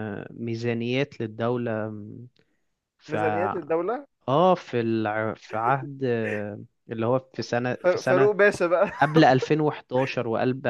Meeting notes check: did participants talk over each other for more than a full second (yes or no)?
no